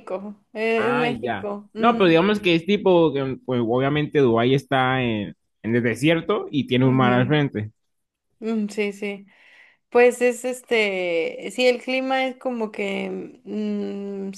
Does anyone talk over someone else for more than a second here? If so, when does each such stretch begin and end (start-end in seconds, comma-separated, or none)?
0.8-2.2